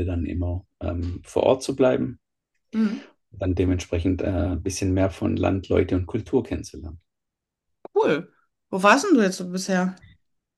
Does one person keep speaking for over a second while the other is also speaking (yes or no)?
no